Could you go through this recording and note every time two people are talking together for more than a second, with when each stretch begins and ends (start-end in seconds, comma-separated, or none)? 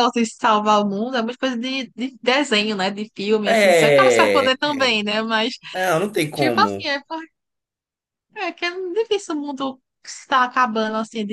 3.5-4.9